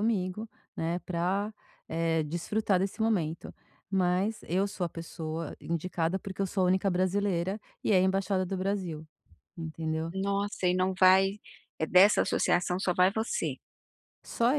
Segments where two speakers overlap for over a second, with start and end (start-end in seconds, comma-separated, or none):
none